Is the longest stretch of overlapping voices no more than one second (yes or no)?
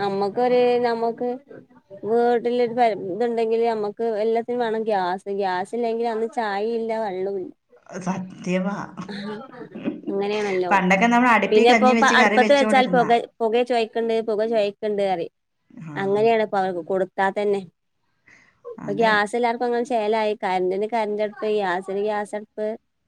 no